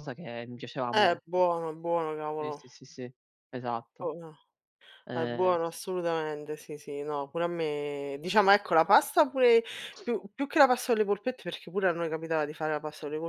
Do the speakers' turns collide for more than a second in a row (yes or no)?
no